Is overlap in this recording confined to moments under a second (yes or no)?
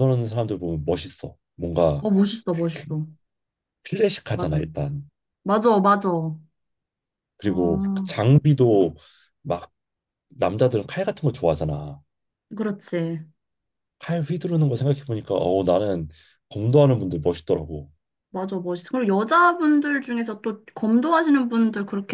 yes